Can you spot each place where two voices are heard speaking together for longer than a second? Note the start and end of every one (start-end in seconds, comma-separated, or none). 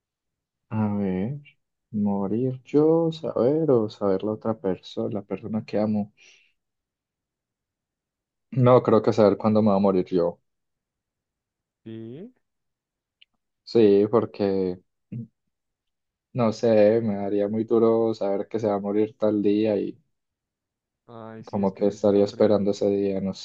21.4-22.8